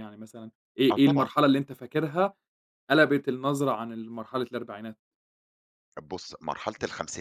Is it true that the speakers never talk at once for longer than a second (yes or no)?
yes